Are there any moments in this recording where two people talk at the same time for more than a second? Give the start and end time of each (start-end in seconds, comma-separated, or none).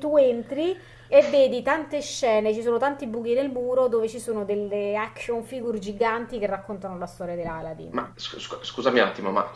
none